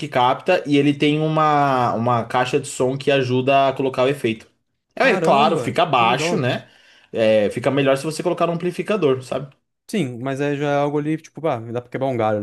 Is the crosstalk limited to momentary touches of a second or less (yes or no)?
no